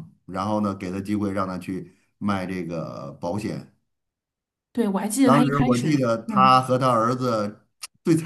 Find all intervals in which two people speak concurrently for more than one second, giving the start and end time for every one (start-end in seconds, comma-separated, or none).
5.2-6.6